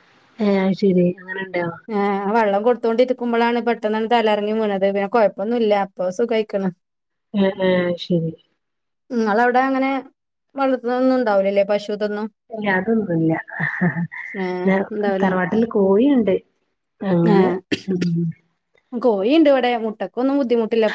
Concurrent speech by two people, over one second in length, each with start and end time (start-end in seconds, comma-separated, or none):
none